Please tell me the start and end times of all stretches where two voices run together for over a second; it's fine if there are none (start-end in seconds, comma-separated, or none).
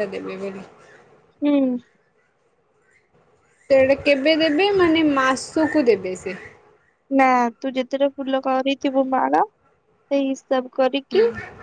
none